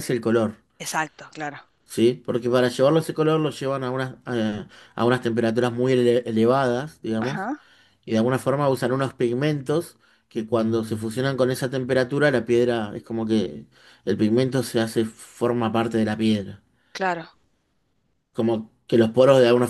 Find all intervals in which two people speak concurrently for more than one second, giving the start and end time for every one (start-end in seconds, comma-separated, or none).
none